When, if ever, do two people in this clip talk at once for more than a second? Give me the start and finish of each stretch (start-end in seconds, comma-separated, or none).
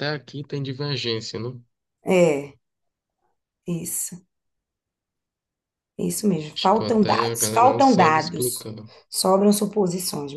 6.5-8.7